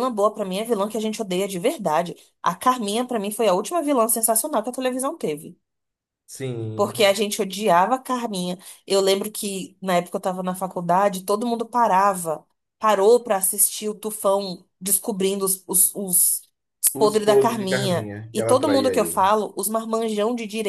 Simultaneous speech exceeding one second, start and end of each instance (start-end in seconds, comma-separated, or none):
16.9-19.2